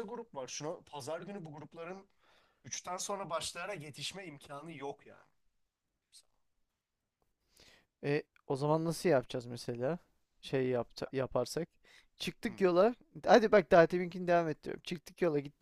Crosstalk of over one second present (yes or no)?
no